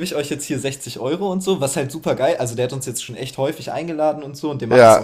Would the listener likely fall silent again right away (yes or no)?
yes